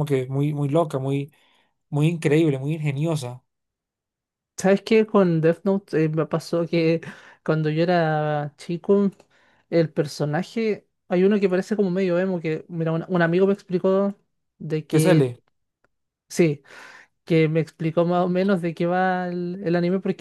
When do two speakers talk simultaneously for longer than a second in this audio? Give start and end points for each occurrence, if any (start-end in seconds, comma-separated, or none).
none